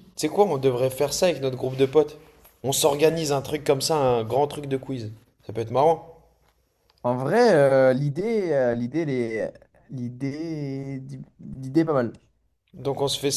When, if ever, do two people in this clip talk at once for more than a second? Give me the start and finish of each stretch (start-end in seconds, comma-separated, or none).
none